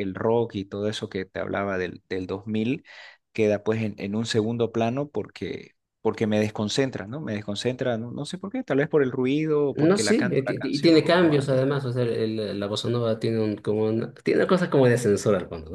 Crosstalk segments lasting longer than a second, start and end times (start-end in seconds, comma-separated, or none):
9.7-11.7